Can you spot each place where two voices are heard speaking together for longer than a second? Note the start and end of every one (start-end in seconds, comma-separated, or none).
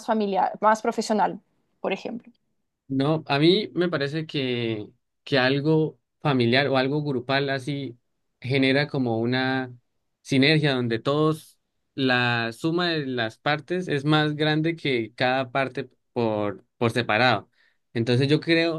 none